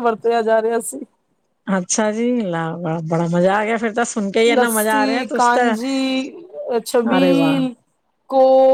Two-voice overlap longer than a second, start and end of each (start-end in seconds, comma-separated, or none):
none